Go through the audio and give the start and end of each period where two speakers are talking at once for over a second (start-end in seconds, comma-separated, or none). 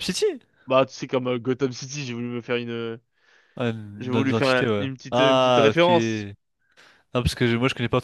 4.0-5.9